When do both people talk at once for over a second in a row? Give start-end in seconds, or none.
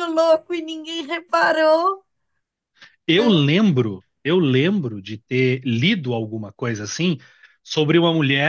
none